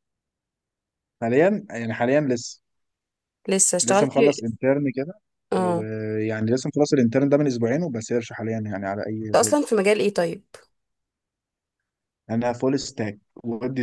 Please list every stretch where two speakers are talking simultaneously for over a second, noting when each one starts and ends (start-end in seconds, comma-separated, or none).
none